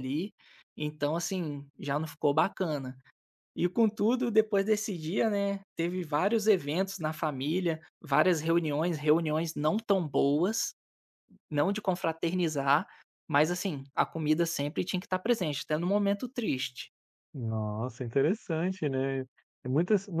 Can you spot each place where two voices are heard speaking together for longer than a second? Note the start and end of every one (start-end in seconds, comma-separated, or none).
none